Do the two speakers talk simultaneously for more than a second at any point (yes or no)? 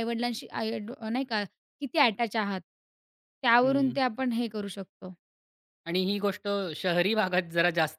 no